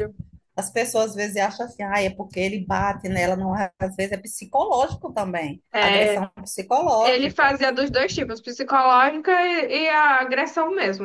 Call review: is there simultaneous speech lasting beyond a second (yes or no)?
no